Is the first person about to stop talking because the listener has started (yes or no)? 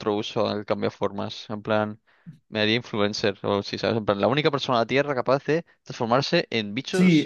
yes